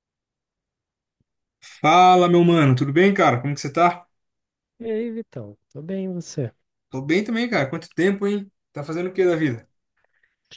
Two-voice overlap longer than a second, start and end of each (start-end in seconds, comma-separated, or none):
none